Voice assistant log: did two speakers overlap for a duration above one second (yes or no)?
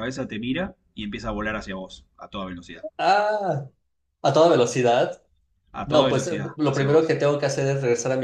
yes